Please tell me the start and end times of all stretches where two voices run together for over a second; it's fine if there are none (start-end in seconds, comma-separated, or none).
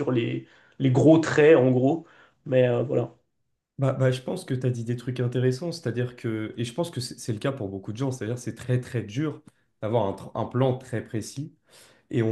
none